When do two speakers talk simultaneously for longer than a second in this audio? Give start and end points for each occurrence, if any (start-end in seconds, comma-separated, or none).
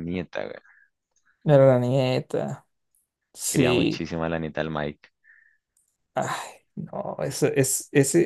none